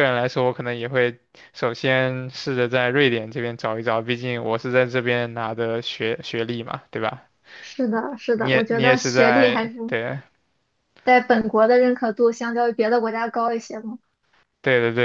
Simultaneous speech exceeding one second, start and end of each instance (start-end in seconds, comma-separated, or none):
8.3-9.8